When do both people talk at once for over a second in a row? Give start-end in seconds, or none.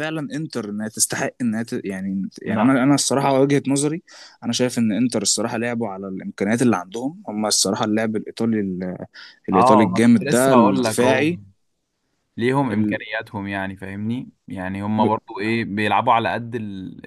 9.5-11.3